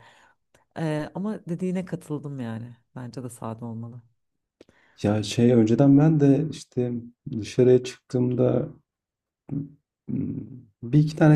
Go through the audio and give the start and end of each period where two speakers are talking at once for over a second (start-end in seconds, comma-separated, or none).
none